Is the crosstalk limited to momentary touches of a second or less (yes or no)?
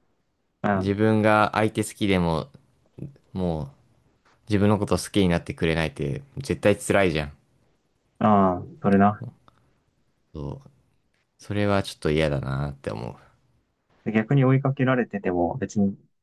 yes